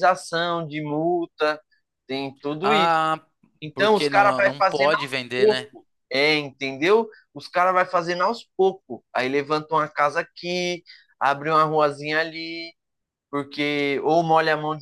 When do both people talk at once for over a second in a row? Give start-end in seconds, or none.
3.7-5.7